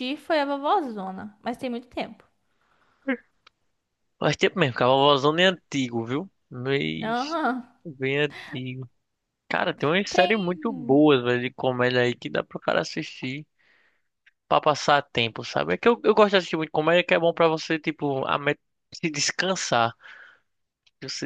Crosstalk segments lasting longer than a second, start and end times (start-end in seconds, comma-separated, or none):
none